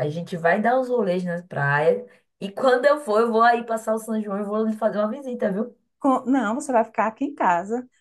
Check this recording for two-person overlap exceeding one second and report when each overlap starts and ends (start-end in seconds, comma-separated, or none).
none